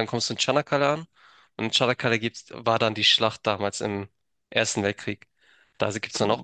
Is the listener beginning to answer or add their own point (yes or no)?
no